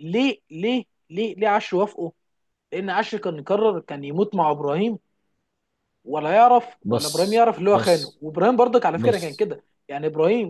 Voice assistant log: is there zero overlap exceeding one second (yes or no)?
no